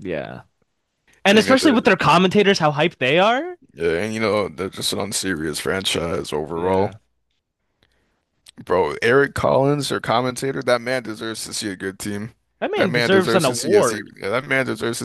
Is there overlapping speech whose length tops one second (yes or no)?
yes